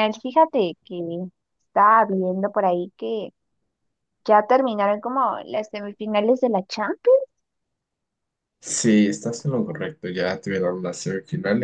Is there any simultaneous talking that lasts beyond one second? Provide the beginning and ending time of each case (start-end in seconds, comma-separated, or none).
none